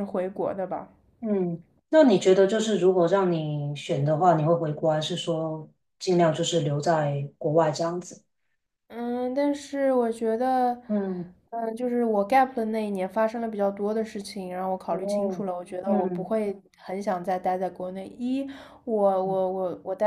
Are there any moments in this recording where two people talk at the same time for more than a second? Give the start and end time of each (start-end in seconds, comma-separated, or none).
14.9-16.4